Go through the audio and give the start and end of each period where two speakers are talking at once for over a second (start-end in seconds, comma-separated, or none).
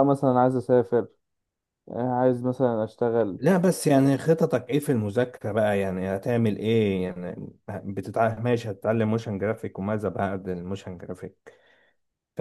none